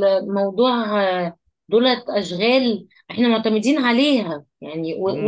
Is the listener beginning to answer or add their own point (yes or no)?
yes